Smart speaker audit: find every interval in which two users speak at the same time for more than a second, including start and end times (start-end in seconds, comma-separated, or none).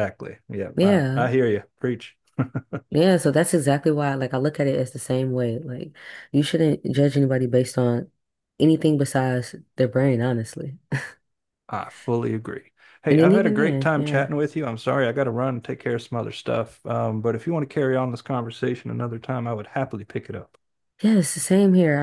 13.1-14.3